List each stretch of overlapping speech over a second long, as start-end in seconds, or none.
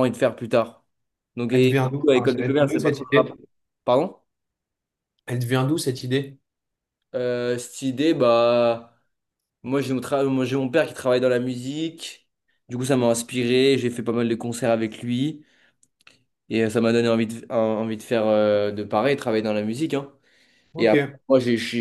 1.5-3.4